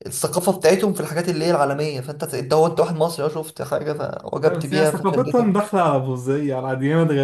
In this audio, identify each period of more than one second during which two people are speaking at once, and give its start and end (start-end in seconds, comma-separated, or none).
4.4-5.7